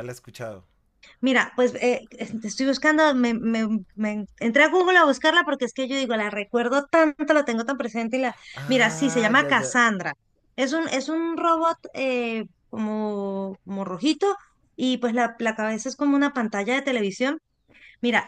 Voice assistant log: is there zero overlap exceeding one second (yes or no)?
no